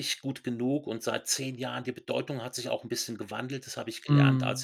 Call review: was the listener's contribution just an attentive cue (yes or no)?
yes